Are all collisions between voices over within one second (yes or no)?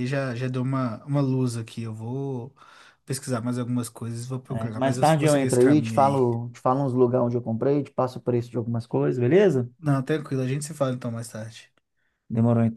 no